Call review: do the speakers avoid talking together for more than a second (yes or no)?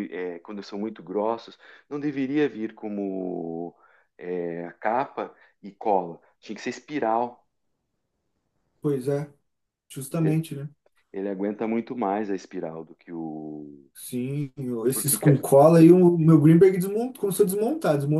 yes